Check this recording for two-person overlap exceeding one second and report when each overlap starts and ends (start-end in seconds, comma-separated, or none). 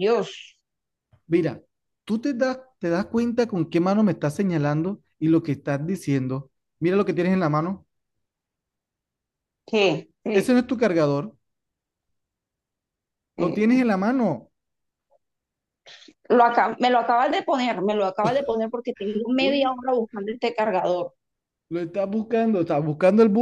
none